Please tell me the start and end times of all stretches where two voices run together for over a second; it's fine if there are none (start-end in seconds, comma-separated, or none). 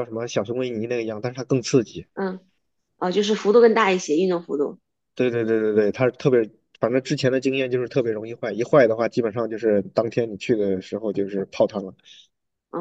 none